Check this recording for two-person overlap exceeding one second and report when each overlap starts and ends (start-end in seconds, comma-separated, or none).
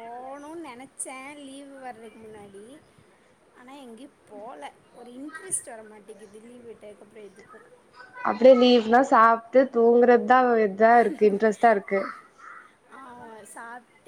none